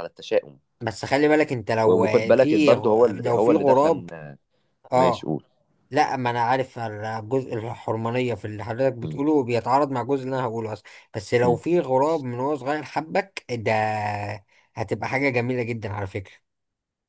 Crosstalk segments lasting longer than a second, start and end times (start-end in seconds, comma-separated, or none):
1.8-4.1